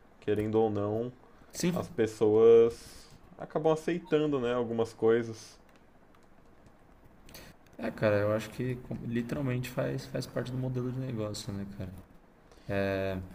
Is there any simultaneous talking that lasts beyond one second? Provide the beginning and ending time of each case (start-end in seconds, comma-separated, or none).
none